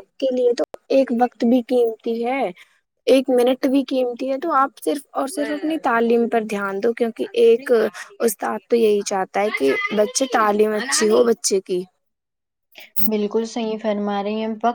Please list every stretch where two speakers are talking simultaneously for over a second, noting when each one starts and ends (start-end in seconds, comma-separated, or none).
none